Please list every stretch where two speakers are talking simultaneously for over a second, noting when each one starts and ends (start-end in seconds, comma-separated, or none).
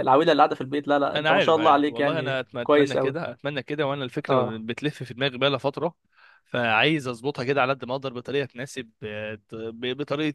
1.1-3.2